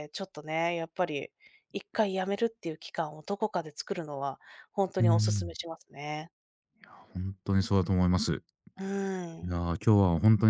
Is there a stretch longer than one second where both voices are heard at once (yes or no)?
no